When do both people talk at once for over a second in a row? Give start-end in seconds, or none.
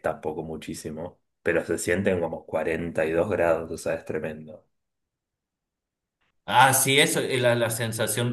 none